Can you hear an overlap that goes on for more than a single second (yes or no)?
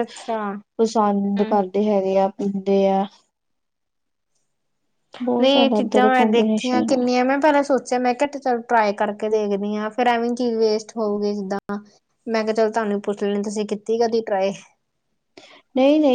yes